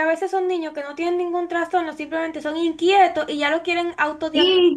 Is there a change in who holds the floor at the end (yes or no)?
yes